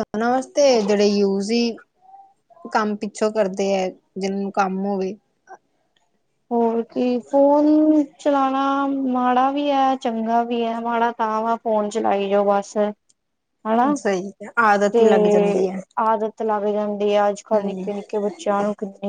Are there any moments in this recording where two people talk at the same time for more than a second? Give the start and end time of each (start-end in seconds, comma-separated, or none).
none